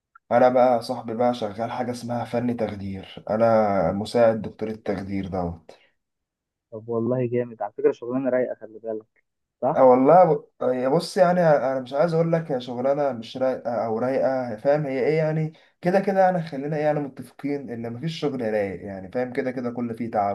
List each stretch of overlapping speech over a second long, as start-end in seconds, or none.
none